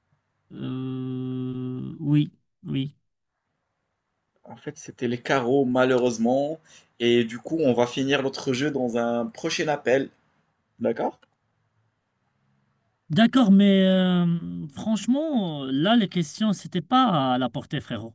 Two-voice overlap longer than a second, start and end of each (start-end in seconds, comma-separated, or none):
none